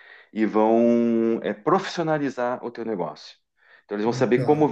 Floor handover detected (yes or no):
no